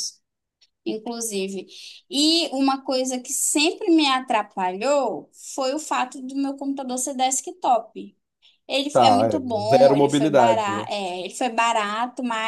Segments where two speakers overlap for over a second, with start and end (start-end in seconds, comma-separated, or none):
8.9-10.9